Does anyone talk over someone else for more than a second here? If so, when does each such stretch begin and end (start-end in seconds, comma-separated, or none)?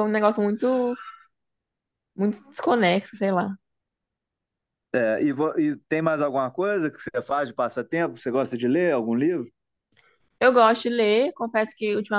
none